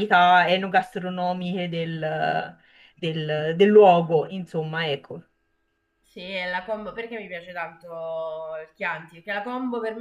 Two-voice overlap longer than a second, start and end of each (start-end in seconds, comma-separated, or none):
none